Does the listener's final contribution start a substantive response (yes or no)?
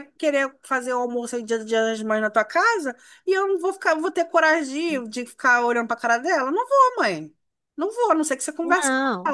yes